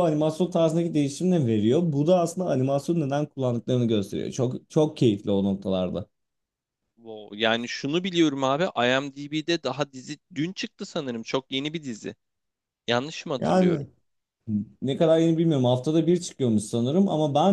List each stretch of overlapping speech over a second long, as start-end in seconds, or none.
none